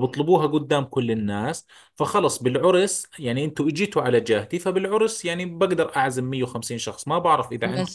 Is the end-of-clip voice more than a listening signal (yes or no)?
yes